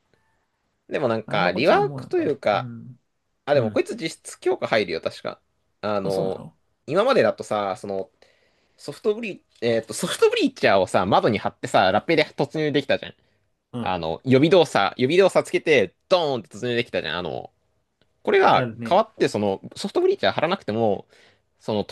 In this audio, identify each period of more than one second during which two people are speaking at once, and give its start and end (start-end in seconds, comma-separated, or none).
1.3-2.7